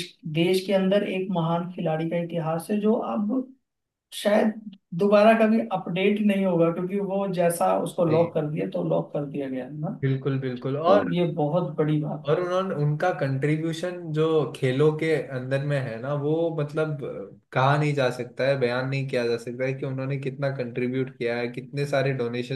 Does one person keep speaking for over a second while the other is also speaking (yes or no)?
no